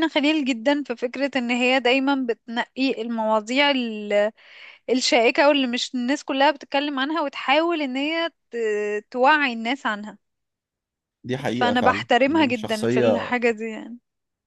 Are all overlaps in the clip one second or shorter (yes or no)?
no